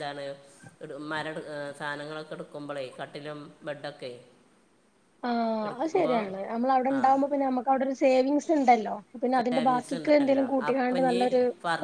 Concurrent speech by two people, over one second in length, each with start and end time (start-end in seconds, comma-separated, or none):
9.4-11.2